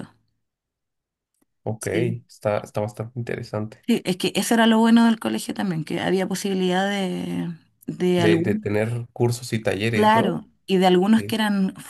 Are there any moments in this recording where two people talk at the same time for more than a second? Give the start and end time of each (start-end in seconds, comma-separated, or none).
none